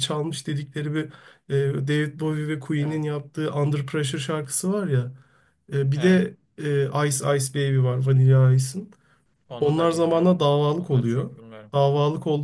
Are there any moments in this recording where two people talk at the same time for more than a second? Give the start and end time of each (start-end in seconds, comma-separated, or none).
9.6-11.3